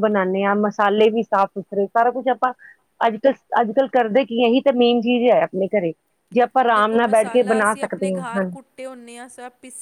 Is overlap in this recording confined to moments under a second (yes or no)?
no